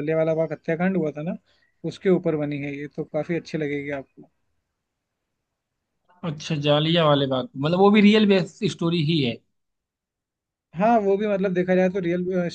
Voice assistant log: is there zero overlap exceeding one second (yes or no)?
yes